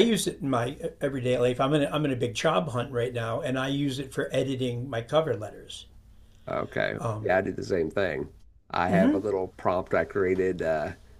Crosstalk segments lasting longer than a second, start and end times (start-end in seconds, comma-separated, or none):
none